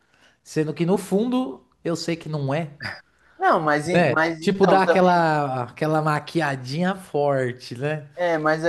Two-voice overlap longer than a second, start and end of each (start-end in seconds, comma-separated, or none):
3.9-5.2